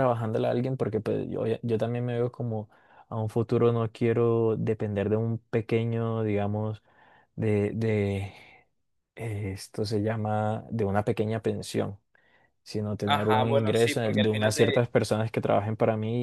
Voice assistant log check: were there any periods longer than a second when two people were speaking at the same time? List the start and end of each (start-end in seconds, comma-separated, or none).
13.0-14.8